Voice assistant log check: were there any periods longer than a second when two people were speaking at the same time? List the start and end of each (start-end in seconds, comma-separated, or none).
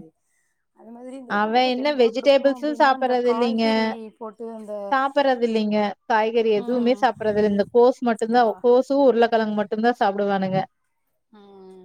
1.4-3.6